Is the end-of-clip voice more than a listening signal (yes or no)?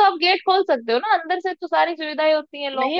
yes